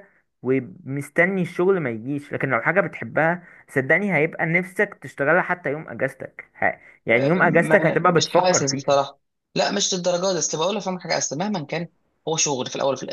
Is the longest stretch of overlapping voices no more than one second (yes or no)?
no